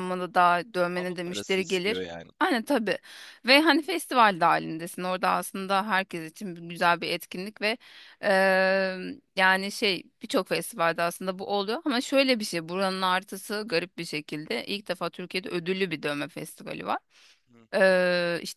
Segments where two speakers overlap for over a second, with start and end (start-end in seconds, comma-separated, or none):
0.9-2.3